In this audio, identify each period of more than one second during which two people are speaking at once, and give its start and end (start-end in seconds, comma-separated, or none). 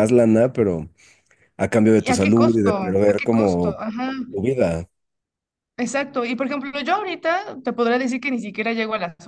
2.0-3.8